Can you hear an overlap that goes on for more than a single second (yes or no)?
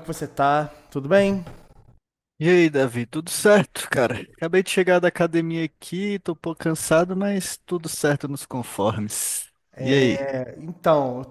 no